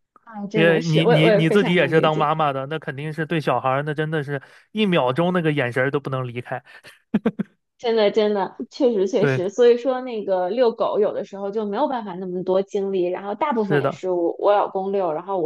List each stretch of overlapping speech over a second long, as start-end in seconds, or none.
0.5-2.3